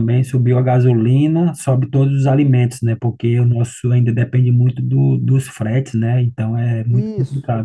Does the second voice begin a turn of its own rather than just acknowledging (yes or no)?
yes